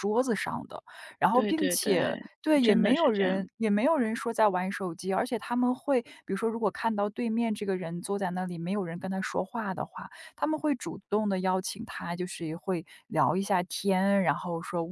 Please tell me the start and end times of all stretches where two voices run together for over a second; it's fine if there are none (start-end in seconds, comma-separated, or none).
1.3-3.5